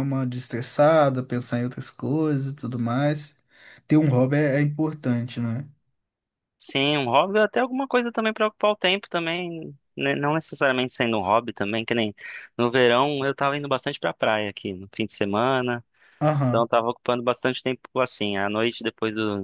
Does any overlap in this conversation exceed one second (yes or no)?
no